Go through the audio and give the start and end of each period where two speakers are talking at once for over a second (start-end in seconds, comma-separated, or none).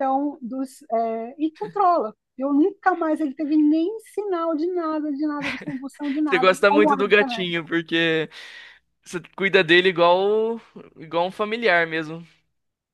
6.2-7.5